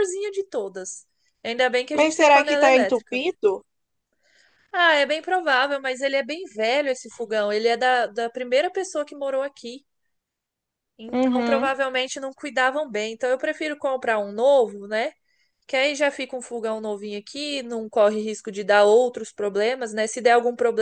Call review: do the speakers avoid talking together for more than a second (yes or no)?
no